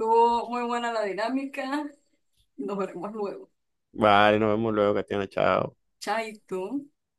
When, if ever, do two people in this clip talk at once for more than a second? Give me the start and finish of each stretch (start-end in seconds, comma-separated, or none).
none